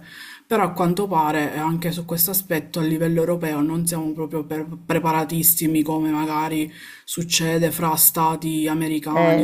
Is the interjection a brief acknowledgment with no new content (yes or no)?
no